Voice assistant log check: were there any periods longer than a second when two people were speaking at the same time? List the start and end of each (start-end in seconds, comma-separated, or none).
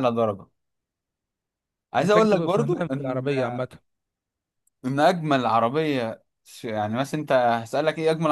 2.0-3.3